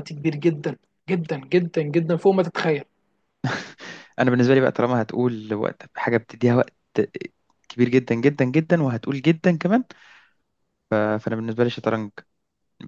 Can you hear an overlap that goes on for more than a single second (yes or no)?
no